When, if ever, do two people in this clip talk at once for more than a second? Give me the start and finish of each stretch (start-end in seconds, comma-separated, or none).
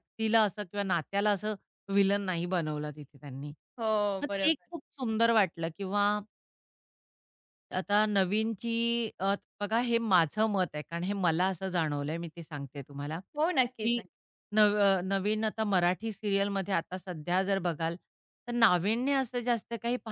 none